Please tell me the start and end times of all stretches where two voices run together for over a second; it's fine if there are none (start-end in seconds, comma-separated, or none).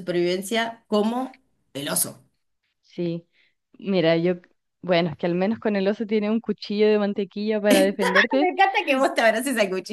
none